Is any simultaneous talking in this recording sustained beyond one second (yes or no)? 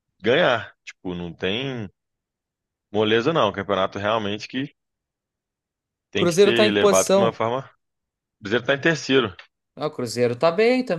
yes